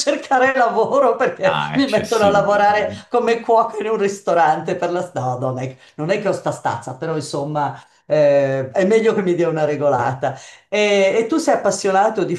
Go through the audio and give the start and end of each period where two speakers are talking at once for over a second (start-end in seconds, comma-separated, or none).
1.4-3.0